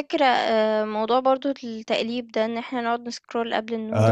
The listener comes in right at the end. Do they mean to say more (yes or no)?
yes